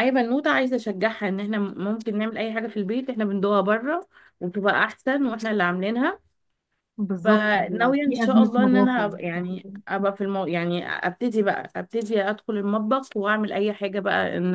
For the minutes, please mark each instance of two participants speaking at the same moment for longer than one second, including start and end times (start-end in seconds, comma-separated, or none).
7.2-9.8